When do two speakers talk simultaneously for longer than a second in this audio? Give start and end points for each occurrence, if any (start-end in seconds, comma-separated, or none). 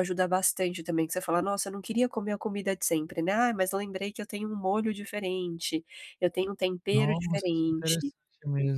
6.9-8.1